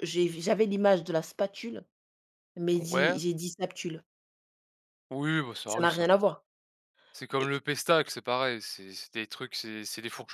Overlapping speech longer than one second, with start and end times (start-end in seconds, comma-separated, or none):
none